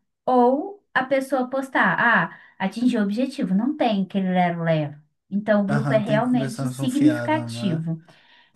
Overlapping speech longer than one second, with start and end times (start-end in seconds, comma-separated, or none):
5.7-7.9